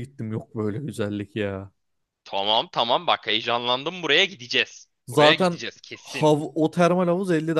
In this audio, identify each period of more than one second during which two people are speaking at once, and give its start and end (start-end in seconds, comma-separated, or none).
none